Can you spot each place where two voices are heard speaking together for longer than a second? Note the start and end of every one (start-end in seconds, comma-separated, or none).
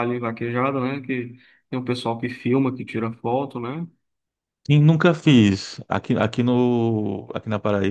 none